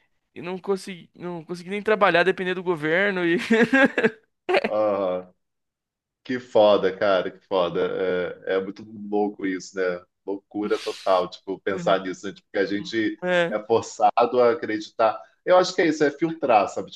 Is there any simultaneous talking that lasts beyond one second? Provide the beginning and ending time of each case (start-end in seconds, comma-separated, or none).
none